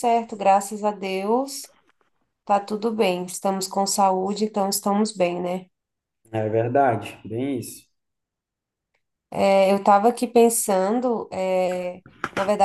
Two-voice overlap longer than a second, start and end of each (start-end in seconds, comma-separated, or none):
none